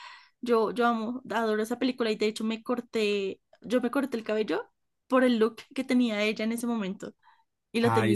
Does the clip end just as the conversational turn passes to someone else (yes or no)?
yes